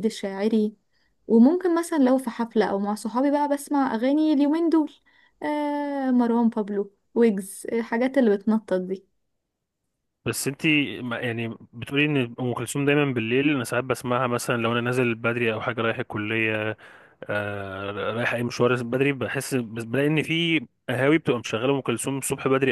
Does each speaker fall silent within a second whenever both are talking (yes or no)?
yes